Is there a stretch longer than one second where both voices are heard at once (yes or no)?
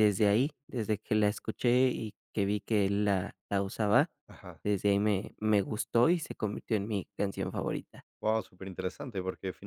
no